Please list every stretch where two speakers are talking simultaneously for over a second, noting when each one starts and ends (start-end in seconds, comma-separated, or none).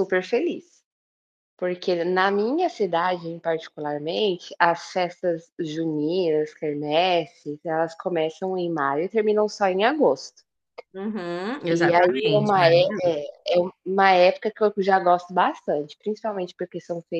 11.7-13.2